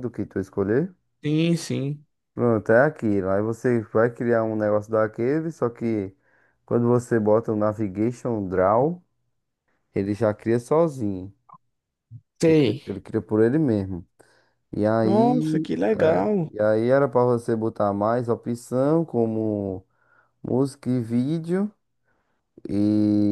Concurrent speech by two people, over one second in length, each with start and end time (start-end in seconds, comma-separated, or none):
15.0-16.5